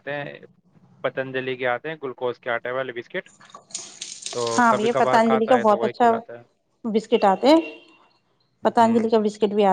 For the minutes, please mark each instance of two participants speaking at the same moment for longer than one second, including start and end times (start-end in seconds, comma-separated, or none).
4.6-6.1